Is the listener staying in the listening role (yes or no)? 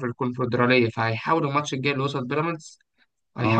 no